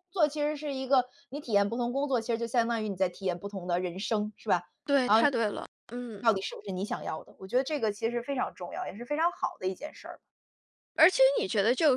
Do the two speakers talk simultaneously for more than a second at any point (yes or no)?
no